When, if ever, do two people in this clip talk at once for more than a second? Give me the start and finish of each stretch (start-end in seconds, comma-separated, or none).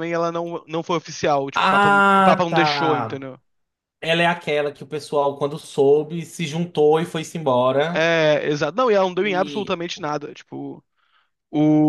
1.5-3.2